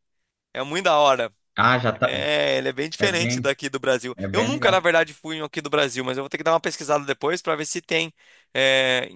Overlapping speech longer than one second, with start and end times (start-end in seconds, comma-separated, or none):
none